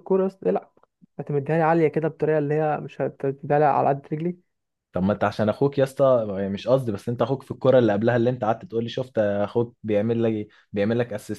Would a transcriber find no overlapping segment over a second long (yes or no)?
yes